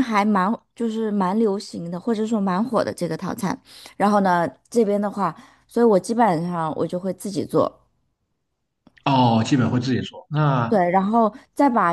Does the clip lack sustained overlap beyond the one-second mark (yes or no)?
yes